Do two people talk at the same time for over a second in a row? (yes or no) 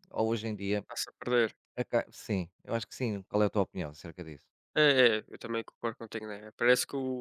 no